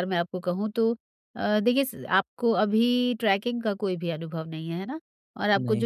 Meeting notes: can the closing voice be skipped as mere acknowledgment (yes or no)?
yes